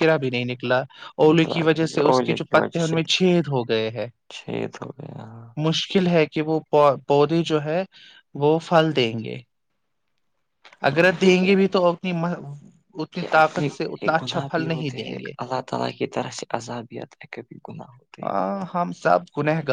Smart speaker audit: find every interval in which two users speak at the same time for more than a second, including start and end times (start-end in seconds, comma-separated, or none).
1.3-3.0